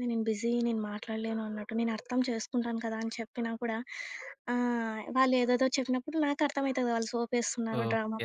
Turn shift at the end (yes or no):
yes